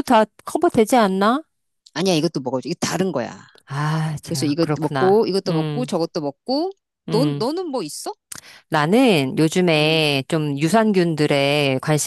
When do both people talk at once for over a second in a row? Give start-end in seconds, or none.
4.2-5.9